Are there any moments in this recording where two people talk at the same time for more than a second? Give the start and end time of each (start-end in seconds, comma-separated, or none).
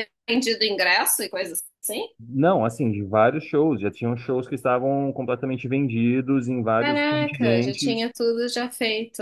6.8-8.1